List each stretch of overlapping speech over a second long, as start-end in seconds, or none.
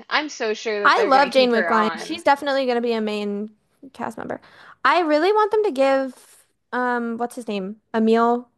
0.8-2.2